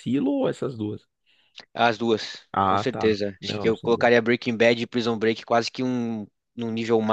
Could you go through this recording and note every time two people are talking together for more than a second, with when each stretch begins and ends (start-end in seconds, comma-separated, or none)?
2.5-4.1